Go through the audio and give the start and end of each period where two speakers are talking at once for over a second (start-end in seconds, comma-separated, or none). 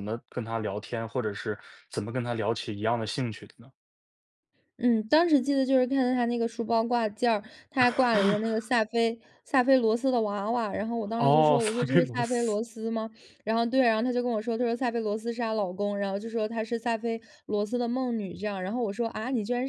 11.2-12.6